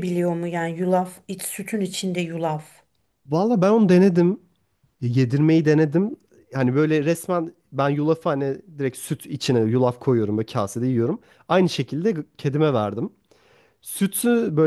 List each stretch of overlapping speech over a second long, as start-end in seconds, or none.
none